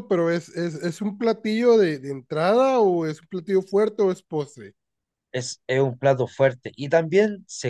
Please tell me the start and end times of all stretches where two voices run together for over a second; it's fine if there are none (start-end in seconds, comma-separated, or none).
none